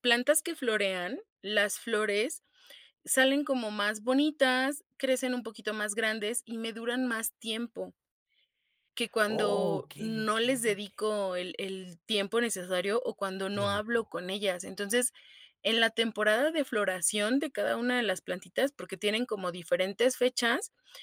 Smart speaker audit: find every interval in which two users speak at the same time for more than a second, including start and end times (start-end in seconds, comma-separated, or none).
9.3-11.1